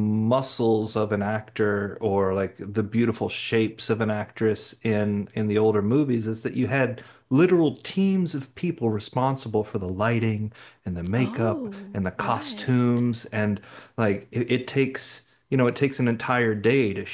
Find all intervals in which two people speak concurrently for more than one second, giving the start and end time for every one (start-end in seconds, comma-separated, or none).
11.2-12.8